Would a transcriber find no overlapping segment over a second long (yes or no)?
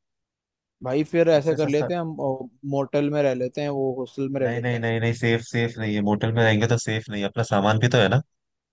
yes